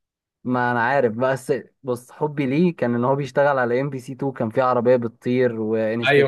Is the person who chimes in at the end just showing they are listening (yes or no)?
no